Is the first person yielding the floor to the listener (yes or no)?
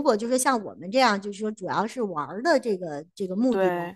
no